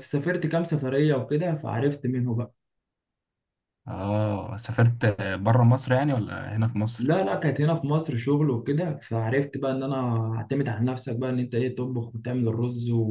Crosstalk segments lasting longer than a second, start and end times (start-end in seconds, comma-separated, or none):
none